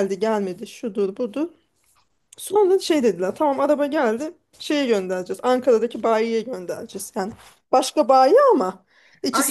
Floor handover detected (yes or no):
yes